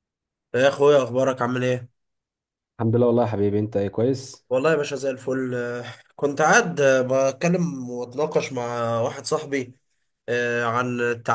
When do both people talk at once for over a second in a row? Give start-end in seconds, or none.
none